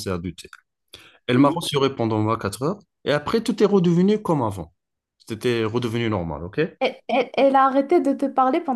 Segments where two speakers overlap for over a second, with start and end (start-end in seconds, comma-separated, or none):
none